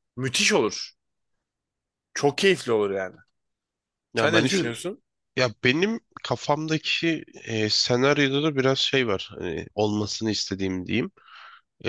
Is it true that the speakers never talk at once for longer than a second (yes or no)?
yes